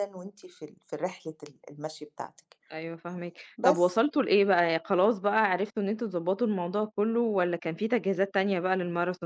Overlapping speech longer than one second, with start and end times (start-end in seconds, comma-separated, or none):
none